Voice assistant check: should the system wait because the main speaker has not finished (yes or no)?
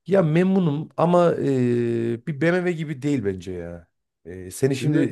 yes